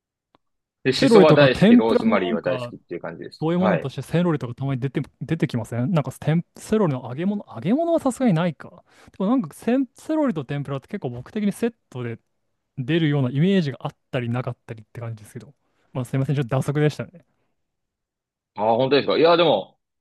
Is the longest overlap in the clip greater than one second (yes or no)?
yes